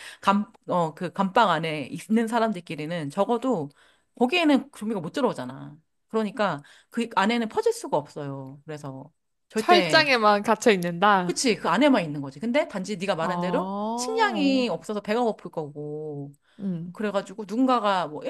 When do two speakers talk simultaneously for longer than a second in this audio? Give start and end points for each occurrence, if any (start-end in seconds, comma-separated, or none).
13.2-14.7